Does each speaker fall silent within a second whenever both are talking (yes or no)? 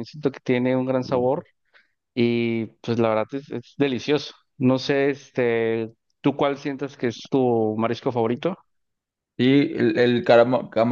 yes